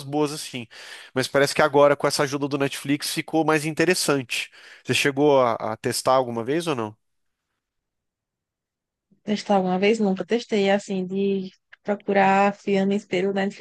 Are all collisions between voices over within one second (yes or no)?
yes